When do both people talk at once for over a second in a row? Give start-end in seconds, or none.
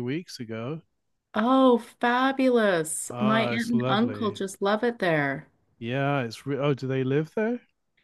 3.1-4.4